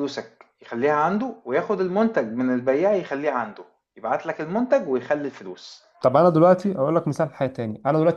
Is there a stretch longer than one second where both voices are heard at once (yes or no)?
no